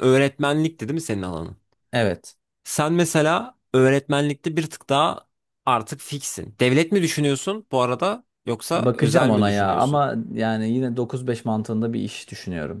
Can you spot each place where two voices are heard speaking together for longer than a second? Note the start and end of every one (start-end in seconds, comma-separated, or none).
8.7-10.0